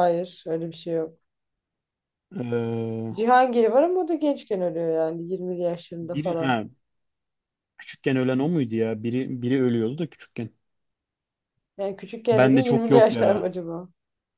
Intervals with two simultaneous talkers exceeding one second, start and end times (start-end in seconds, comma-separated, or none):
12.3-13.5